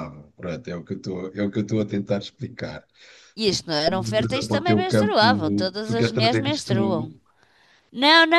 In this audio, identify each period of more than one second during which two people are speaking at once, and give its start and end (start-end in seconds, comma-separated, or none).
3.4-5.2, 5.8-7.1